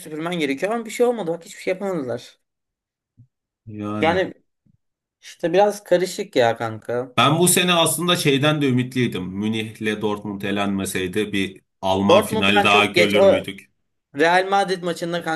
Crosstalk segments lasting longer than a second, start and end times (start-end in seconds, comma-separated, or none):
12.1-13.5